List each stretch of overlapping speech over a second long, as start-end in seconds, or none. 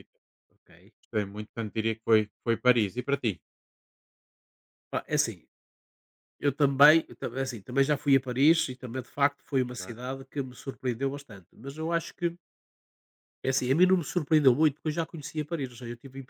none